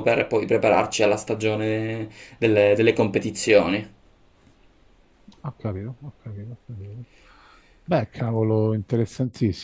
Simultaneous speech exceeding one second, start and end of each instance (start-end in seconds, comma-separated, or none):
none